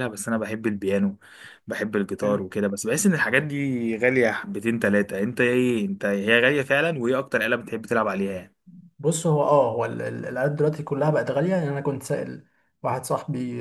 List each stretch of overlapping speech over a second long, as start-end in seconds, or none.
none